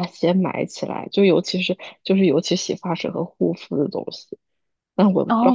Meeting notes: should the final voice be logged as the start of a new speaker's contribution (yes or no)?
yes